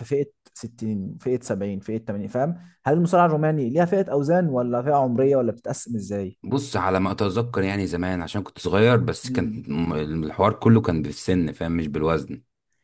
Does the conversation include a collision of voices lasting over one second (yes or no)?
no